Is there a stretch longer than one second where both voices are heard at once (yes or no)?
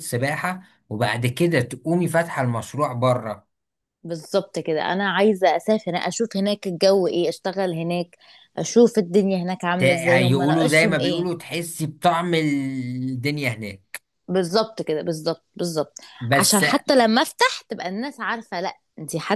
yes